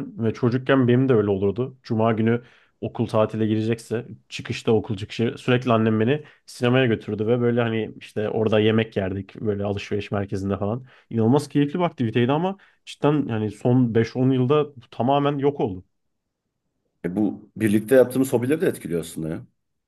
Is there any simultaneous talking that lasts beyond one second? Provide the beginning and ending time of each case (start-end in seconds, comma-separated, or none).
none